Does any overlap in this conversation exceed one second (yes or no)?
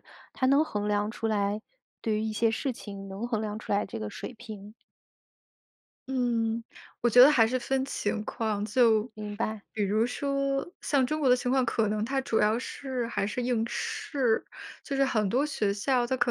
no